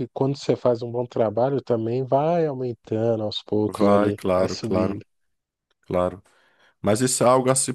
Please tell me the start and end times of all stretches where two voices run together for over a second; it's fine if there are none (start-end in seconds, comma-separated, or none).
3.7-5.0